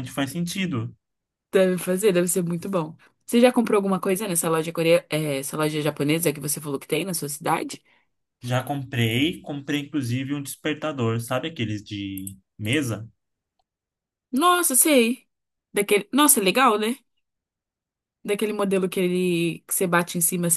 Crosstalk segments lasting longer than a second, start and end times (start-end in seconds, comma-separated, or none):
none